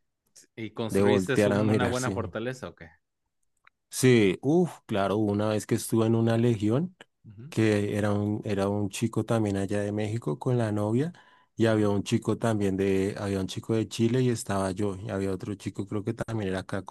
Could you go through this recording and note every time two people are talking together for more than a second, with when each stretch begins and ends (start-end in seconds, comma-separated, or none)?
0.9-2.1